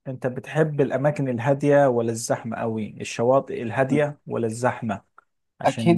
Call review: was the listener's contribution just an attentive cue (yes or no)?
no